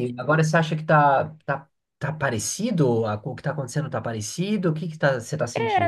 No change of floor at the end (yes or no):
no